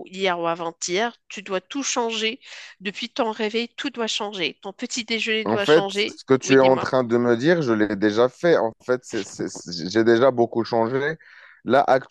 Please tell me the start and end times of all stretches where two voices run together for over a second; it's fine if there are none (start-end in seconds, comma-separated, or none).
5.4-6.9